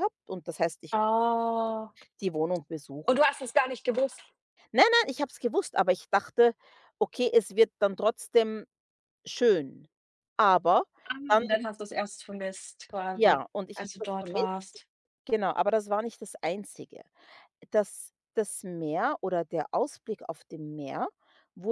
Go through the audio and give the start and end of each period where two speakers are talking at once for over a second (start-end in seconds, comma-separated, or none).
13.1-14.8